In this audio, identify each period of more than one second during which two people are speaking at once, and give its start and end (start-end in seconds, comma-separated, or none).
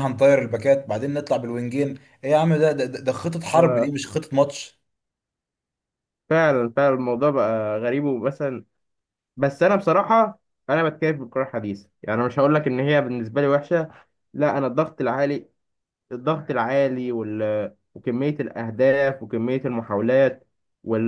none